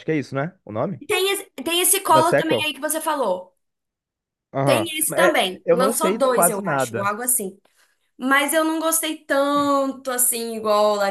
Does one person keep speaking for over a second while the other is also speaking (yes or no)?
yes